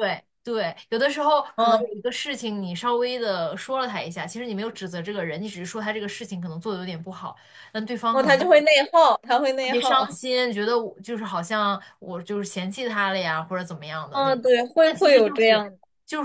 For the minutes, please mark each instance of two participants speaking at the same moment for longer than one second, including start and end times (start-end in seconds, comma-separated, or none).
14.1-15.6